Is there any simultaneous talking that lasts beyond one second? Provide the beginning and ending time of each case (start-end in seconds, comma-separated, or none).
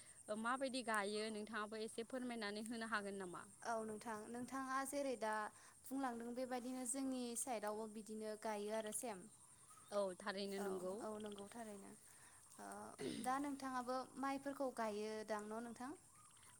none